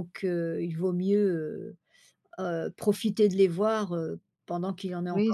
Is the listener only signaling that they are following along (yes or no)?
no